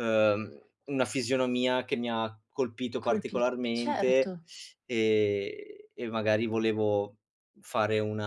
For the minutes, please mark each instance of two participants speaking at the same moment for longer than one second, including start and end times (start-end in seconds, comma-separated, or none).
3.0-4.3